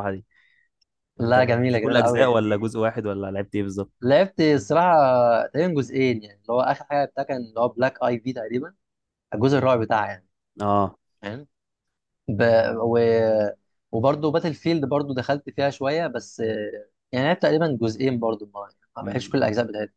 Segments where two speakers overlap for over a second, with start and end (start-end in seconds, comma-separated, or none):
1.2-2.7